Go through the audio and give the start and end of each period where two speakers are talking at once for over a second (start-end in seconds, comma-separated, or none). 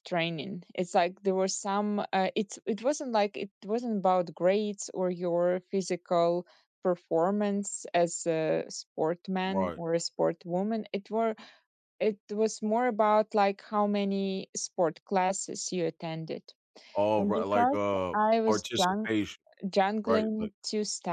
17.1-19.1